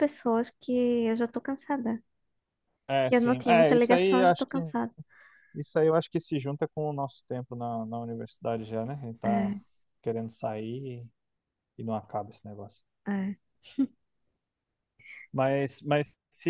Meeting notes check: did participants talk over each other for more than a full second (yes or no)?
yes